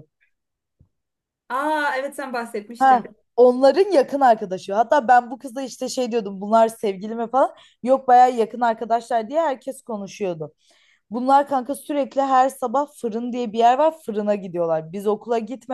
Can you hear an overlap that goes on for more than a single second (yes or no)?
no